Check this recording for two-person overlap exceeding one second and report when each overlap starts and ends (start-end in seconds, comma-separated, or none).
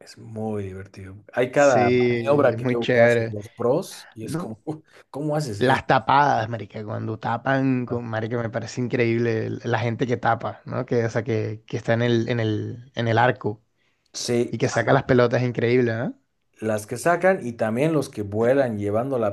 1.6-3.4